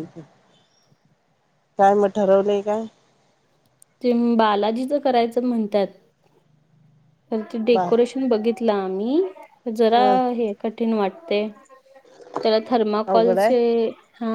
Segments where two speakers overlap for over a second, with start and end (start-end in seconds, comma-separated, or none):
none